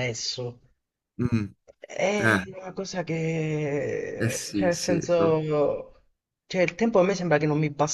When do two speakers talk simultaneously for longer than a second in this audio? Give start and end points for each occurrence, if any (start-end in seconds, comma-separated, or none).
4.2-5.5